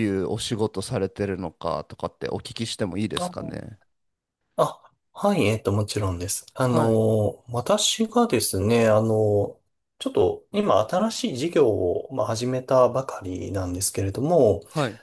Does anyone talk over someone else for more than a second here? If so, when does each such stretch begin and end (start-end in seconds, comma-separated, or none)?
none